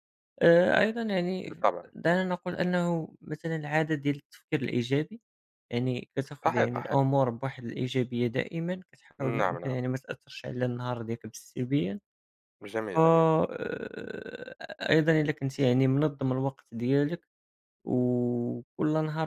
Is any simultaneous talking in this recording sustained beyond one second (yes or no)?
no